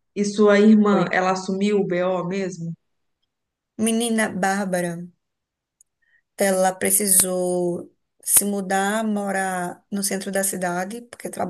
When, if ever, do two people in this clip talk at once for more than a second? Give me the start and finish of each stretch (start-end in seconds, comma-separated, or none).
none